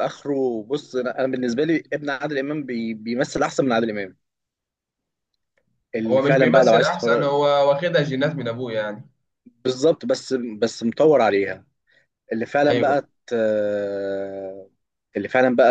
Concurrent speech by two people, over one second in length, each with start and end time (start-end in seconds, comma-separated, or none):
6.1-7.3